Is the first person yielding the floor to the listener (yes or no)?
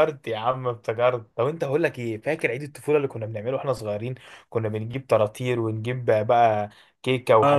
yes